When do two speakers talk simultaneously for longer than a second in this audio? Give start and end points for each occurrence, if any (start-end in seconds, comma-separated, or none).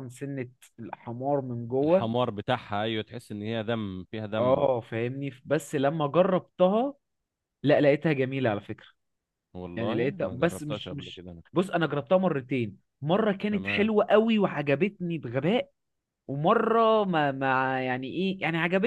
9.8-11.4